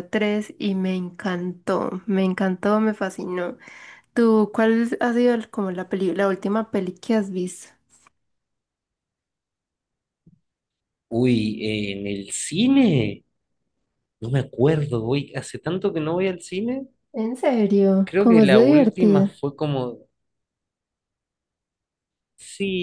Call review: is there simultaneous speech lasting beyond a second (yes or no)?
yes